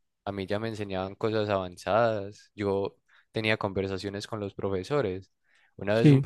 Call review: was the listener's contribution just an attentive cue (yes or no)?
yes